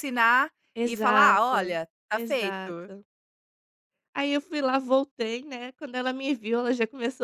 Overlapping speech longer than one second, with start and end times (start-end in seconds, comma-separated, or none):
0.8-2.9